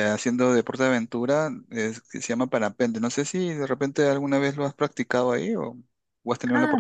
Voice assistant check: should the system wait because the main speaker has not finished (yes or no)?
no